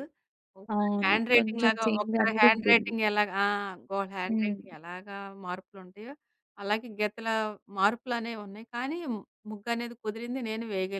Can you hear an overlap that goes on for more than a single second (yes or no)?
yes